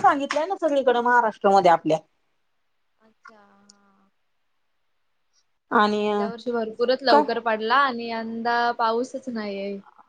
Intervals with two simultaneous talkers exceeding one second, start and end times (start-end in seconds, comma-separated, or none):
none